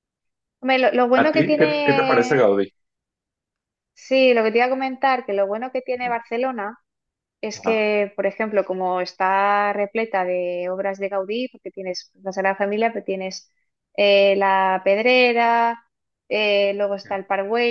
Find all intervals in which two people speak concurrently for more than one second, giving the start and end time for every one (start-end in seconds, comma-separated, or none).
1.2-2.6